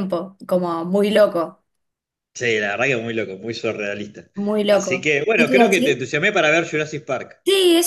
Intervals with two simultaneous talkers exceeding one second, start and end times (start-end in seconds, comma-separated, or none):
4.7-6.0